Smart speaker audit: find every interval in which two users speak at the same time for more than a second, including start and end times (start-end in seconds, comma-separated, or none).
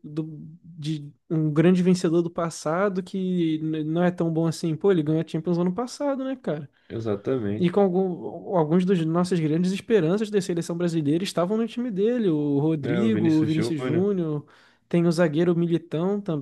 12.8-14.1